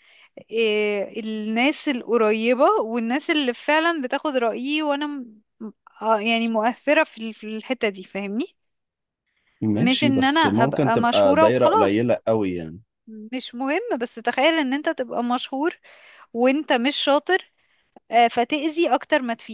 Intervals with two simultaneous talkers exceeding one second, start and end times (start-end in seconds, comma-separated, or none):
9.7-12.1